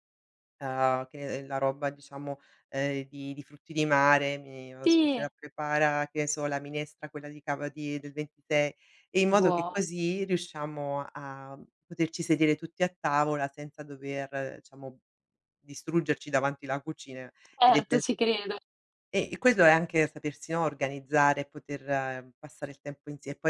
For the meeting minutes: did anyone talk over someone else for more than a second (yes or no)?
no